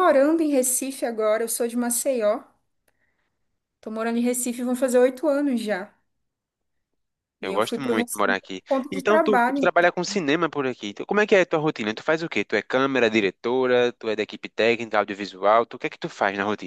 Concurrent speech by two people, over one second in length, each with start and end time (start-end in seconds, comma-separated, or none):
7.4-9.7